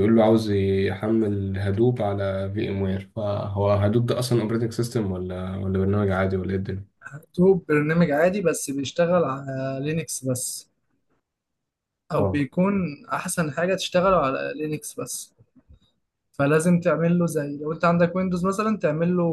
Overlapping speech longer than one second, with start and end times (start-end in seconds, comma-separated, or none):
none